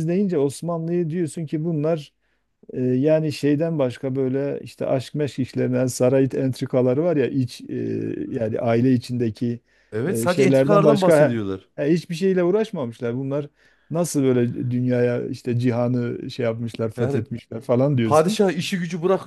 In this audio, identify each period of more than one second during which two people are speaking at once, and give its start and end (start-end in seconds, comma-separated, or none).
10.1-11.4